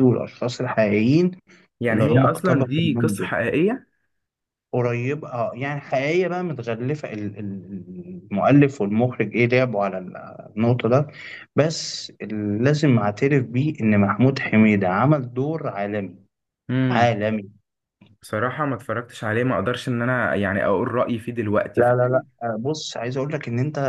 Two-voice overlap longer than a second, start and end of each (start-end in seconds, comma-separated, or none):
1.9-3.2